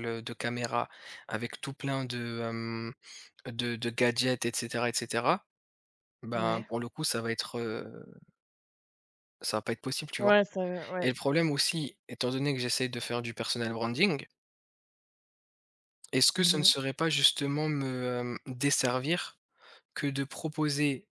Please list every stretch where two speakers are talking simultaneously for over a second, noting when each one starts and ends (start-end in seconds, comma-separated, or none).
none